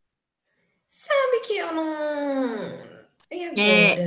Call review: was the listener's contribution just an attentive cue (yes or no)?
no